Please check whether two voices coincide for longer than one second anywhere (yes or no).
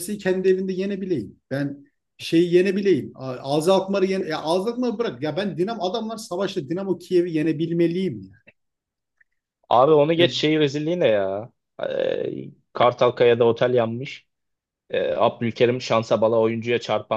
no